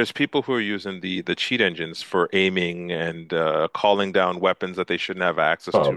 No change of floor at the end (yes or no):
yes